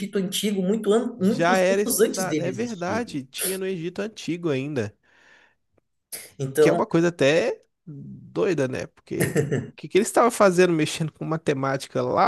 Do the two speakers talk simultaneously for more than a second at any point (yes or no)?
yes